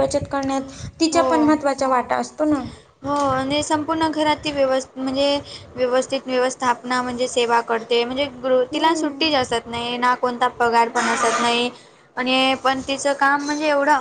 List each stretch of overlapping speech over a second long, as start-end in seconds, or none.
none